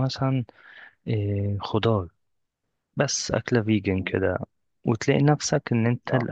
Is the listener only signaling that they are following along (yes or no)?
yes